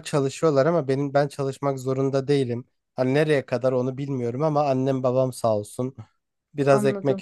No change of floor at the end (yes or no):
yes